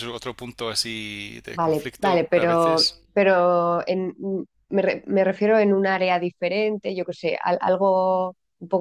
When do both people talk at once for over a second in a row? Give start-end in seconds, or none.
1.6-3.0